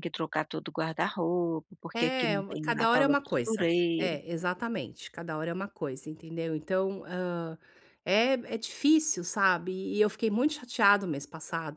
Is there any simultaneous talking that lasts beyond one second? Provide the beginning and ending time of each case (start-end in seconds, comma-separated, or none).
1.9-4.2